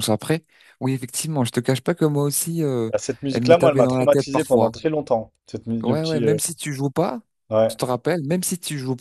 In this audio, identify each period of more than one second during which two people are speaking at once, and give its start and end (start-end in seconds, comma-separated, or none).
3.3-4.7